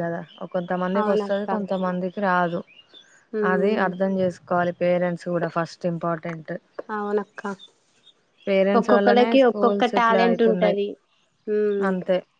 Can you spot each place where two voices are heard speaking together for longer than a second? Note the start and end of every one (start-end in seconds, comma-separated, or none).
8.8-10.8